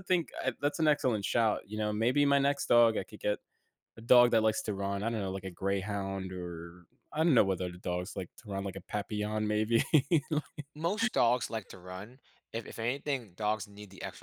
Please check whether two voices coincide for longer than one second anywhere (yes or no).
no